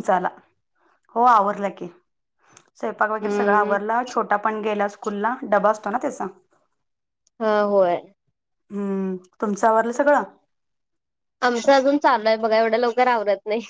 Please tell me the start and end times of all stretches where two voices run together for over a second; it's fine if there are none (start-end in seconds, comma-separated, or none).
none